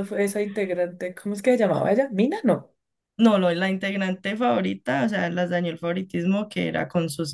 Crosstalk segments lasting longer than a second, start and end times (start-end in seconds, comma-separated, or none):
none